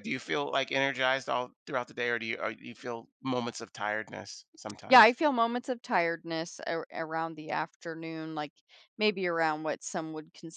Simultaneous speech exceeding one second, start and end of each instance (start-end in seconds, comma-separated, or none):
none